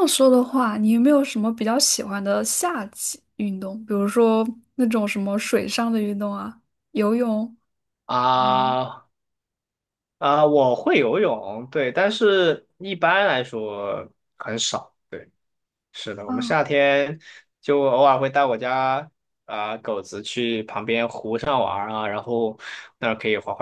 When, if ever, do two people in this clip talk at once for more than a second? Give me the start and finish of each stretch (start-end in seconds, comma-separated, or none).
none